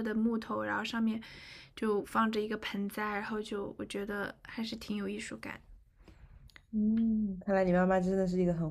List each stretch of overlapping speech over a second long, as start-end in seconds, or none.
none